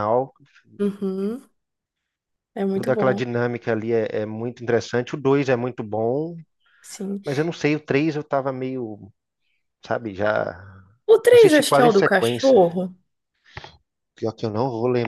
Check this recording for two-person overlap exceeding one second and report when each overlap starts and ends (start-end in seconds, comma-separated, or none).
11.1-12.6